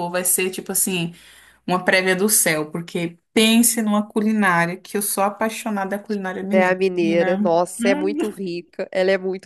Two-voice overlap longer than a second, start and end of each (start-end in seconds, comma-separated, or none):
6.5-8.2